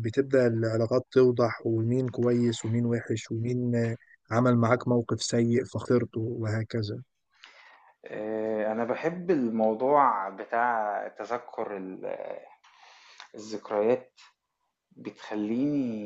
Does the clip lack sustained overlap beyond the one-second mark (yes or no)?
yes